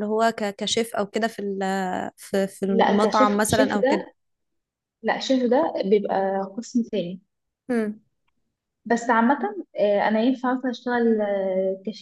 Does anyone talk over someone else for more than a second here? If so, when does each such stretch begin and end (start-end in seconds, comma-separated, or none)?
2.7-4.1